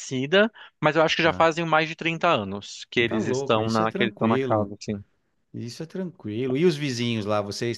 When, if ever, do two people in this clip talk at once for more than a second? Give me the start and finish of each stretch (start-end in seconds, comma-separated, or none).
3.1-4.7